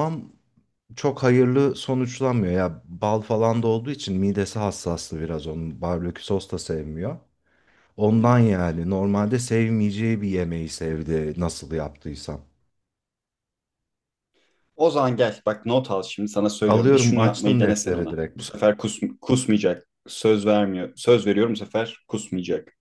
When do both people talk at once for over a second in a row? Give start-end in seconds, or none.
16.7-18.4